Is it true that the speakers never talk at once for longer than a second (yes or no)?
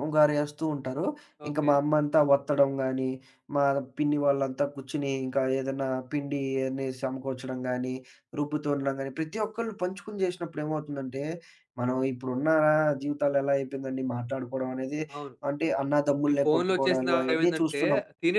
no